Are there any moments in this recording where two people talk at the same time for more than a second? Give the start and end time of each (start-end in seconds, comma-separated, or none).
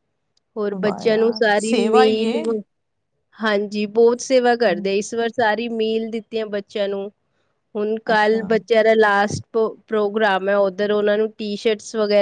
0.8-2.3